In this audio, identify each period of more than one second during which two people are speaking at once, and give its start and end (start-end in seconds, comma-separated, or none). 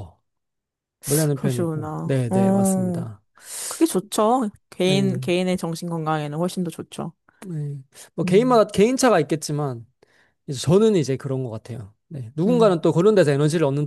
1.3-3.1